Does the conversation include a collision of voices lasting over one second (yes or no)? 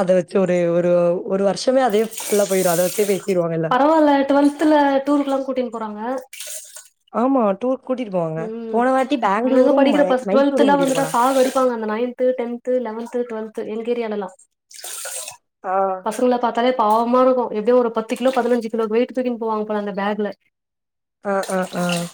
yes